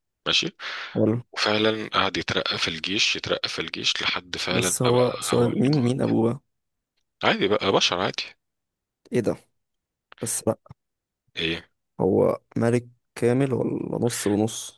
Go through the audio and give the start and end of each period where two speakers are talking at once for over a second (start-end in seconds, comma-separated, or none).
4.5-6.0